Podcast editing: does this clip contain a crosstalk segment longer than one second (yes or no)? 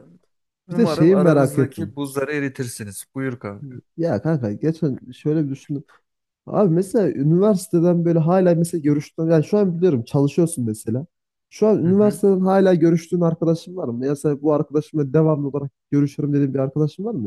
yes